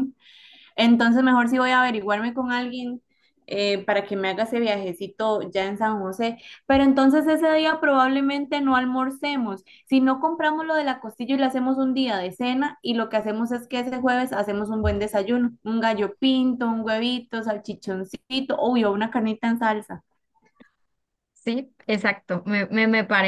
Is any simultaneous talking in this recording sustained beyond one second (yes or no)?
no